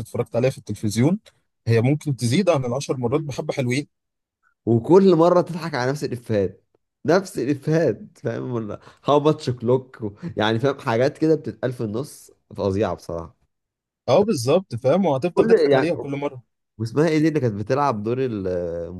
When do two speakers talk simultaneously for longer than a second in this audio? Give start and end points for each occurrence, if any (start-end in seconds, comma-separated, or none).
none